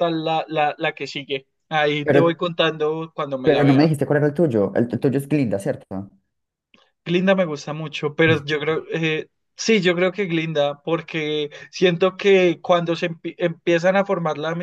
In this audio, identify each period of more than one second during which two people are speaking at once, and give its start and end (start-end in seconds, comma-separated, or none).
none